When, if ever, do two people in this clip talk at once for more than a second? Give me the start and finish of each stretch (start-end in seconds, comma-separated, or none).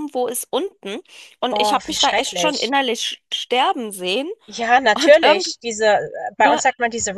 1.5-2.7